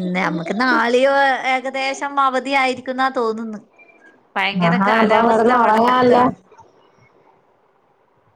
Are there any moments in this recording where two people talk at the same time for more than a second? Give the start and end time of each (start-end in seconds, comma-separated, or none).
4.7-6.2